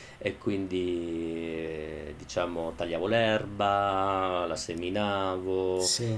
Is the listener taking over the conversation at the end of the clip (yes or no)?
no